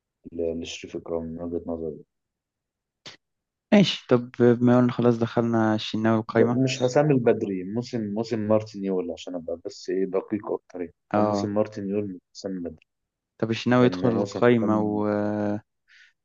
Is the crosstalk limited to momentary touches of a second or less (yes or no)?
no